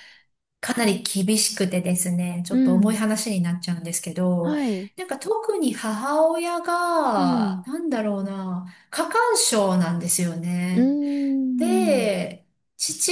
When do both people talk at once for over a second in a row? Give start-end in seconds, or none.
none